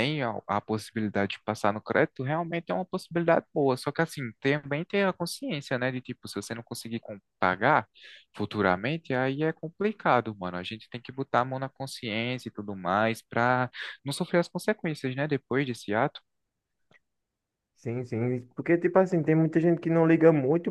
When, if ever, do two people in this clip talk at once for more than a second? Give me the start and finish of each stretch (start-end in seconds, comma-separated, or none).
none